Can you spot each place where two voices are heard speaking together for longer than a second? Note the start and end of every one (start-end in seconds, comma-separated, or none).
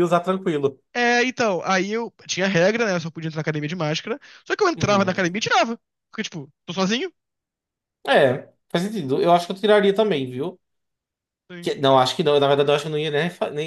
none